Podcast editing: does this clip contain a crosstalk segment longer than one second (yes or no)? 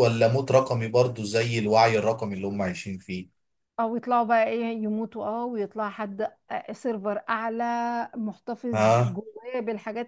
no